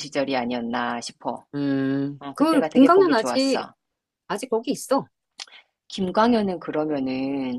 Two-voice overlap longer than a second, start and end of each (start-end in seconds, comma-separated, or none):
2.2-3.6